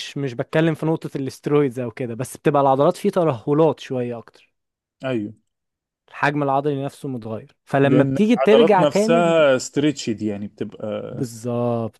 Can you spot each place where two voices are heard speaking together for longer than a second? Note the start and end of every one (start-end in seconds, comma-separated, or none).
7.8-9.4